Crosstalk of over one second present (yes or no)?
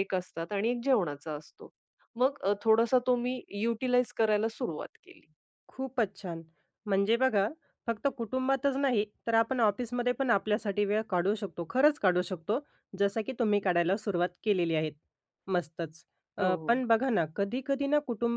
no